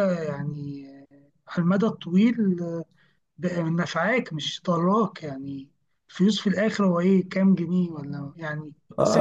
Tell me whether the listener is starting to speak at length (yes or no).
yes